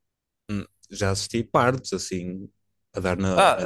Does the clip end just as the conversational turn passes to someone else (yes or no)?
yes